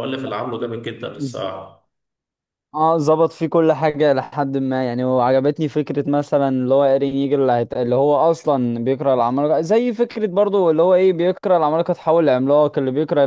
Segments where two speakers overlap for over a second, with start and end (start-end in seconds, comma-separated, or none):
none